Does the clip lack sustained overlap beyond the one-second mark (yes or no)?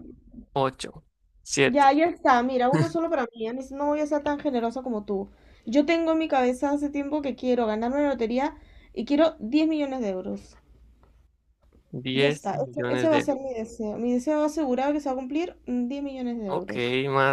no